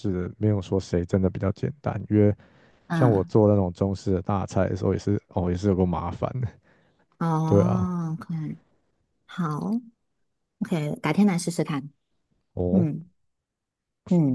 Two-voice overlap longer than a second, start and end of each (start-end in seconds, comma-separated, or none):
none